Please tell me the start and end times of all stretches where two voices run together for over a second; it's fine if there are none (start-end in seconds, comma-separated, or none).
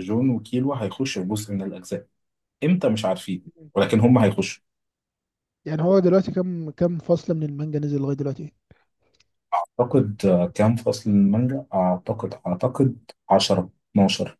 none